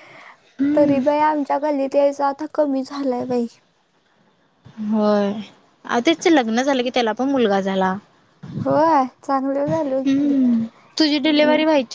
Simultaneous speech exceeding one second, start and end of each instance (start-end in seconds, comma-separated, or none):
none